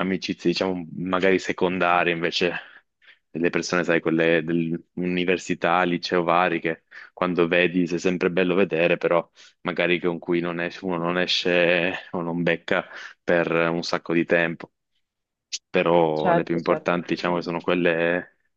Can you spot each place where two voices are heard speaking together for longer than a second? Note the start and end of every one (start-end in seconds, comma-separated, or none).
16.1-17.7